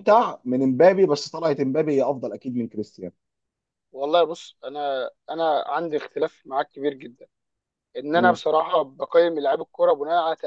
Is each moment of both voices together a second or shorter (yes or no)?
yes